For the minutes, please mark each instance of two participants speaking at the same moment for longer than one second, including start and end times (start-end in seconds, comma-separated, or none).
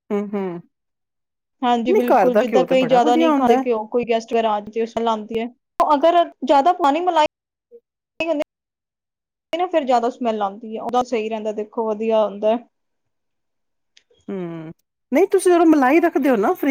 none